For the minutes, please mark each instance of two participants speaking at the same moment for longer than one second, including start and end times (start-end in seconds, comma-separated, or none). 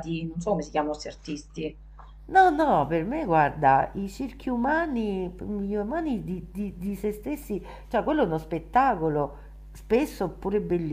none